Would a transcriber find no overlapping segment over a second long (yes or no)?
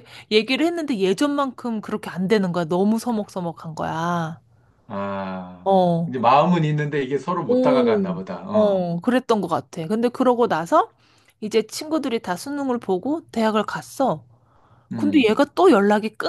no